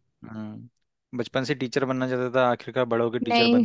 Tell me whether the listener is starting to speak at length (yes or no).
yes